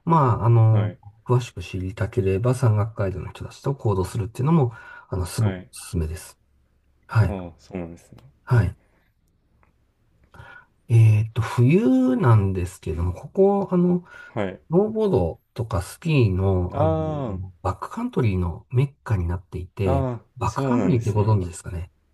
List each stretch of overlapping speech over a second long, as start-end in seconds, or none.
19.8-21.3